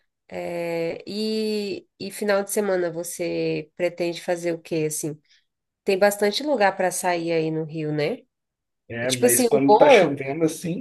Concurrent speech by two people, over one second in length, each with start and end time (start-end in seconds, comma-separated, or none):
9.0-10.2